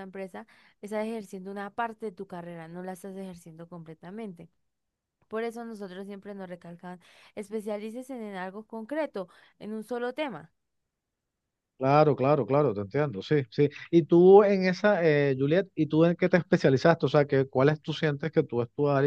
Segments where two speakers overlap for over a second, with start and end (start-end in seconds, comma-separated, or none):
none